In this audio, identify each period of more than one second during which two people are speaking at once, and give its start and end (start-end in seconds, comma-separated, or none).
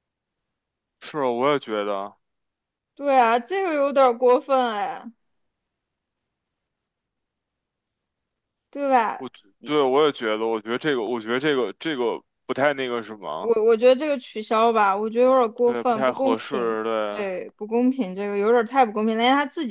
15.7-17.2